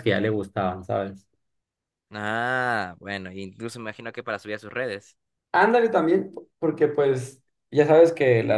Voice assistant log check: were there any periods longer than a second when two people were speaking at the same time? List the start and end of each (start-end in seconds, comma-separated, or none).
none